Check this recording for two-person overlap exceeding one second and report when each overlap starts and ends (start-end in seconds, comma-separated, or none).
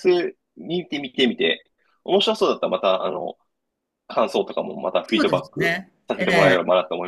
5.0-6.6